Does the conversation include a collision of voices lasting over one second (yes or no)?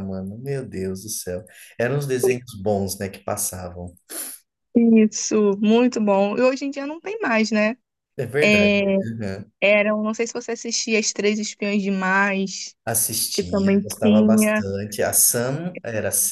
yes